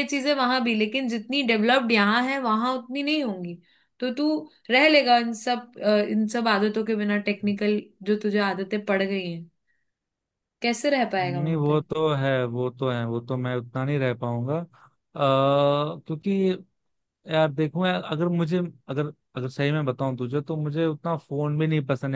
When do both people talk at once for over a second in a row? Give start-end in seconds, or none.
none